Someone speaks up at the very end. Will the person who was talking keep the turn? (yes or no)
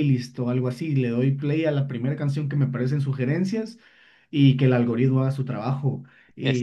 yes